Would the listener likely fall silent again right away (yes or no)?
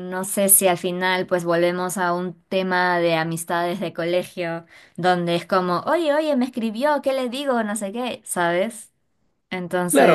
no